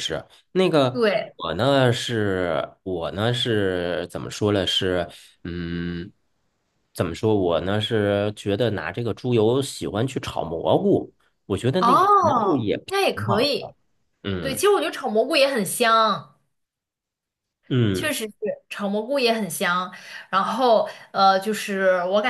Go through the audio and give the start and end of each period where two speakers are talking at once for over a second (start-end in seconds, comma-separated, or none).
11.8-13.7